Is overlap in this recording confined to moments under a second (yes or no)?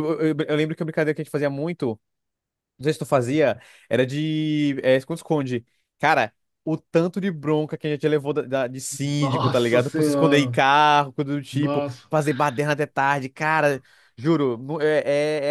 no